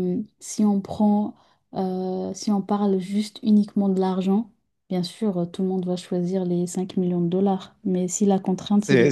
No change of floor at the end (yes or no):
no